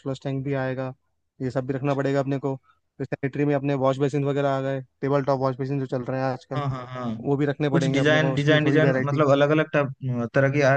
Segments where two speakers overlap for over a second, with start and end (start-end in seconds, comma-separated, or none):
7.7-9.2